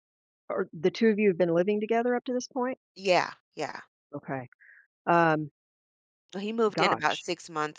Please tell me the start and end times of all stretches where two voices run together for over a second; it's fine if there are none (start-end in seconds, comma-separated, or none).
none